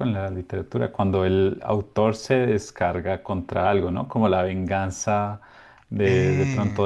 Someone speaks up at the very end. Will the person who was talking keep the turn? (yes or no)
yes